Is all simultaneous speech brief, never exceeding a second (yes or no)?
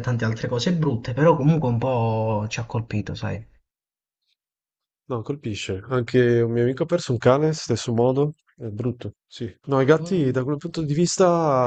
yes